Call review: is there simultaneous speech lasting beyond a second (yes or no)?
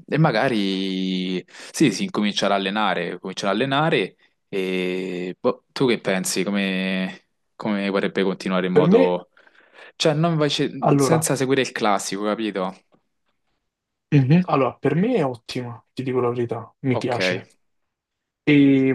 no